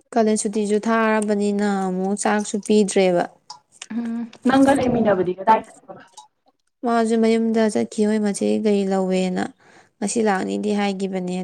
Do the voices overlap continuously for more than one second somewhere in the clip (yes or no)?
no